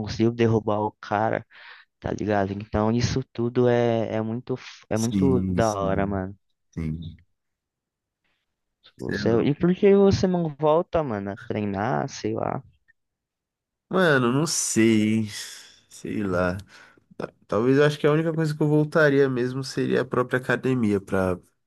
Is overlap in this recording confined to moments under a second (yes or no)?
no